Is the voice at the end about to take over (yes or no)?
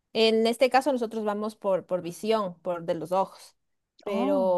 no